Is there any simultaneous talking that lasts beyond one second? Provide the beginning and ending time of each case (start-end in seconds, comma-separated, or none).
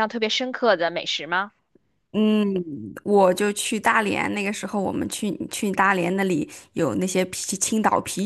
none